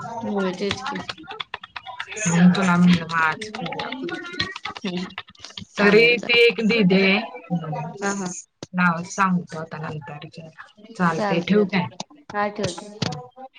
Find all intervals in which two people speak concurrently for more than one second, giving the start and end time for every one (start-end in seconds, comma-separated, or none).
none